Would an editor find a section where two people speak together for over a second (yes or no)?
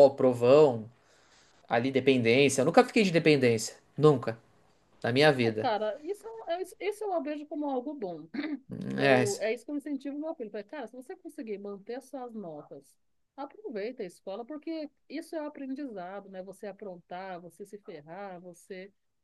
no